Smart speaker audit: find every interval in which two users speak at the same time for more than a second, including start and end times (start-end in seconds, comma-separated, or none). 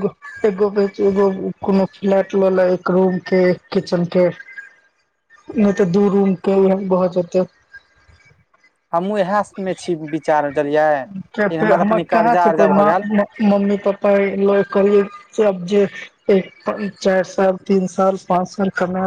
11.3-12.9